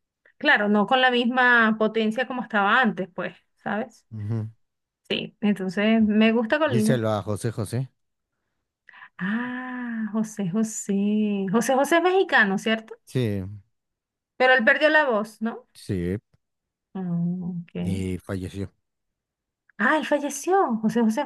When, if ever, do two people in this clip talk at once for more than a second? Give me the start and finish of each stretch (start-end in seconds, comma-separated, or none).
none